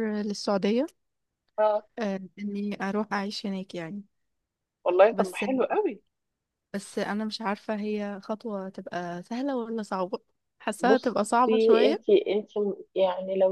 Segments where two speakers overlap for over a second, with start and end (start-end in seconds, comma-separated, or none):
10.8-12.1